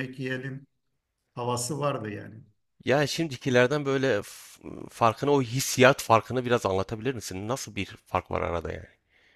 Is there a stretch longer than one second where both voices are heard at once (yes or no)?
no